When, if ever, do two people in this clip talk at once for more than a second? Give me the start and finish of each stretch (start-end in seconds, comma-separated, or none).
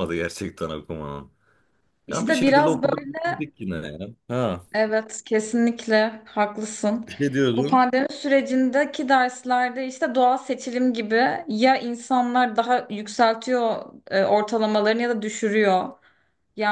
2.1-3.3